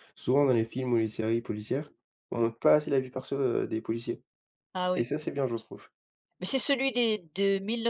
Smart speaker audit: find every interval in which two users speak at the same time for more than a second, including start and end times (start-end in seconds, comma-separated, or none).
none